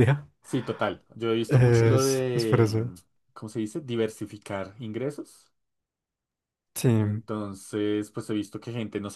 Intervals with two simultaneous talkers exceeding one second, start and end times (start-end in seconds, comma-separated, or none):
1.5-2.9